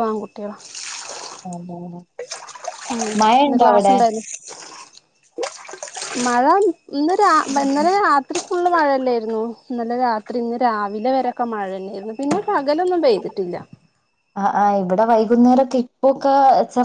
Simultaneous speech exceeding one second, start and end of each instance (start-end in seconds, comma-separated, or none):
none